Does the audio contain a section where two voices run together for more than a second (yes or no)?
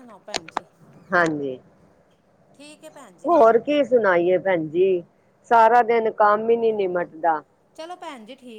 no